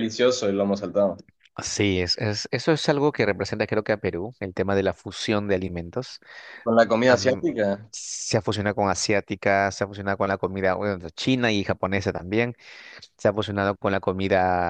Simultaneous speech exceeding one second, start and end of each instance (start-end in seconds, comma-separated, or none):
none